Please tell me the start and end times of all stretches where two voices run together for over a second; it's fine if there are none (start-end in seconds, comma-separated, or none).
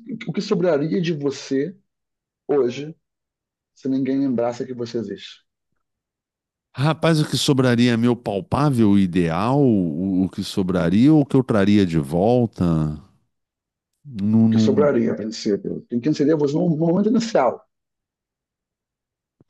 none